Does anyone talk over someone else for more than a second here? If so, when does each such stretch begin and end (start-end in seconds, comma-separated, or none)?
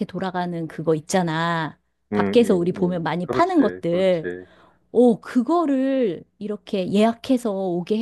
2.1-4.3